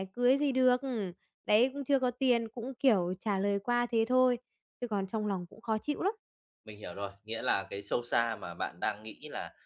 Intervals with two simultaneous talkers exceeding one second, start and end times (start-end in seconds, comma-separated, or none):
none